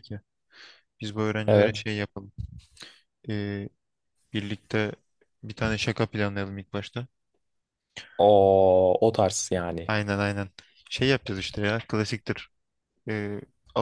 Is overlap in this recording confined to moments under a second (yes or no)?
yes